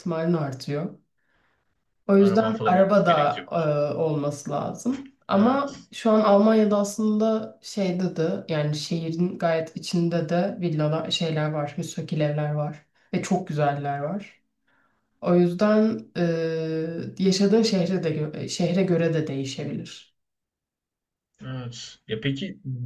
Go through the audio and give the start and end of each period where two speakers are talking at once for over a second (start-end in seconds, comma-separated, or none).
2.1-3.7